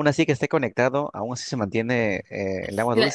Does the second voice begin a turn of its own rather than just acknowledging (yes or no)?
yes